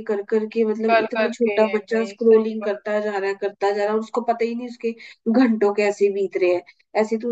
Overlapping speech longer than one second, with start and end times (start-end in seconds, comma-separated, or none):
0.9-3.1